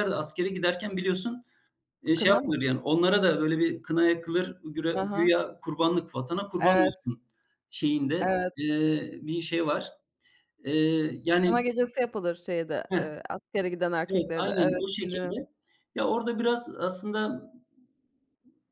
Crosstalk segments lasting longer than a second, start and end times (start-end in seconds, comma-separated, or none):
14.1-15.4